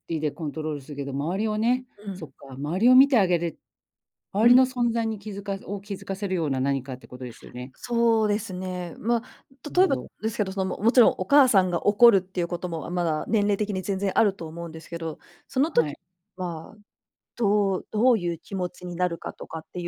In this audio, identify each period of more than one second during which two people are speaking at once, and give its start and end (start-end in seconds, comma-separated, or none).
none